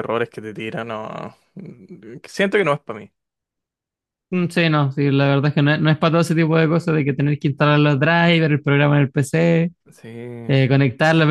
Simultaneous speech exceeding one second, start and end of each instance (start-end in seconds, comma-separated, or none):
none